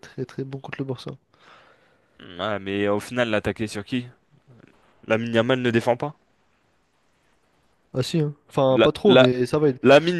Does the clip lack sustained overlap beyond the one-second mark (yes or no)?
yes